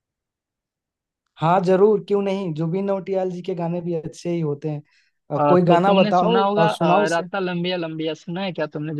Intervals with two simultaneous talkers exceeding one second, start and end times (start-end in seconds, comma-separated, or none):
5.3-7.2